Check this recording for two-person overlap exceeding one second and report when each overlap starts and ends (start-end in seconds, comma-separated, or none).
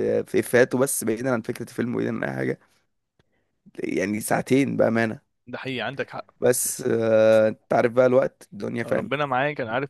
none